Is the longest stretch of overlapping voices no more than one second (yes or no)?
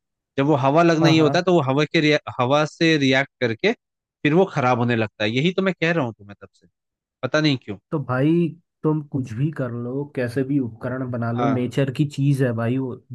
yes